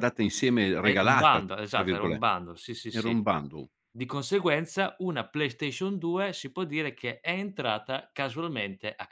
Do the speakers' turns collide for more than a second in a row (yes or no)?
yes